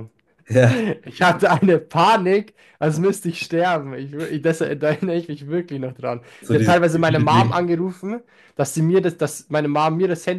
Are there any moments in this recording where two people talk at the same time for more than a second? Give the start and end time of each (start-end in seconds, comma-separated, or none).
6.4-7.7